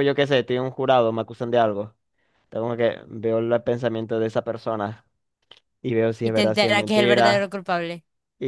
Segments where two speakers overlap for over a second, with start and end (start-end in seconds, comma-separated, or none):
6.2-7.5